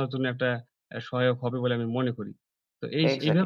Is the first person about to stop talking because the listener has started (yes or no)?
yes